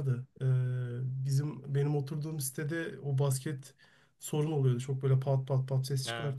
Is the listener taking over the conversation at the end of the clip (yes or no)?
no